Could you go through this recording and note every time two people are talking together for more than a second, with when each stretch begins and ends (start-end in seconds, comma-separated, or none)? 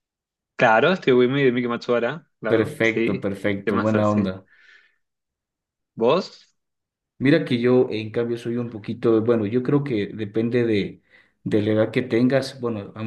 2.5-4.3